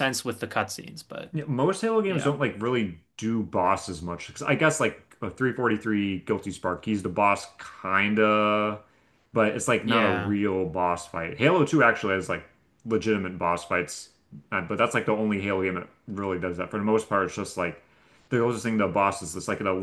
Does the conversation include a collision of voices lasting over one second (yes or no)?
no